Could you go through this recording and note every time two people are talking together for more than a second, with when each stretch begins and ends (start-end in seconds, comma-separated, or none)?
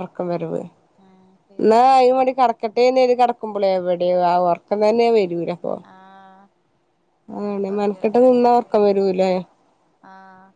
7.7-9.0